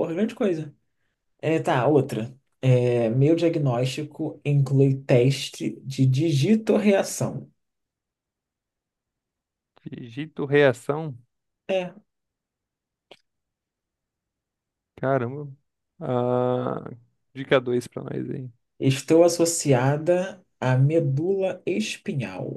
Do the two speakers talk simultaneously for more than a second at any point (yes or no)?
no